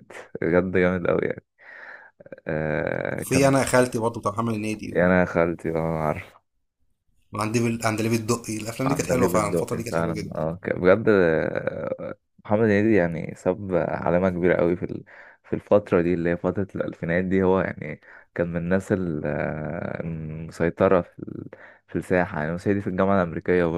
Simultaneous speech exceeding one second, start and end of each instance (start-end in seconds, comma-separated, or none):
8.9-10.4